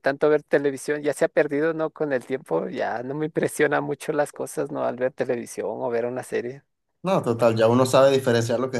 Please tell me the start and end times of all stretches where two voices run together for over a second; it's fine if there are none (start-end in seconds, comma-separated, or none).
none